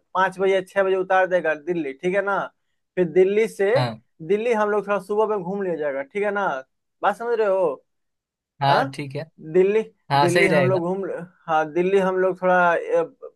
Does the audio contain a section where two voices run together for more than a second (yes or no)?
no